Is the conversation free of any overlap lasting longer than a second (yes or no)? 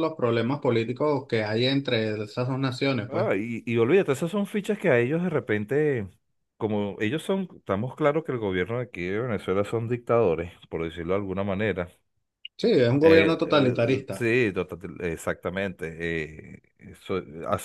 no